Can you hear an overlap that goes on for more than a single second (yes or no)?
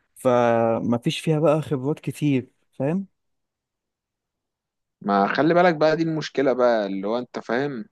no